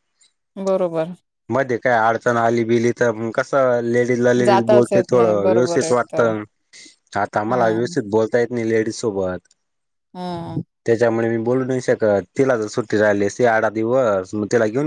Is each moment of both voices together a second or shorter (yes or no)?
no